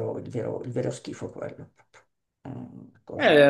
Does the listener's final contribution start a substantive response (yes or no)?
yes